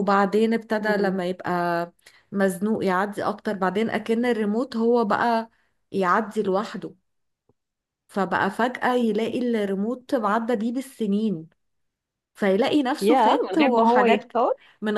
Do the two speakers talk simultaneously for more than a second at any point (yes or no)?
yes